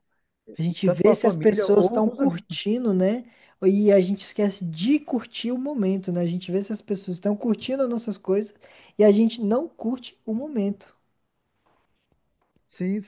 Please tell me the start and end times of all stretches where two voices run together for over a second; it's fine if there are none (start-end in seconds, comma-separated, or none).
0.8-2.6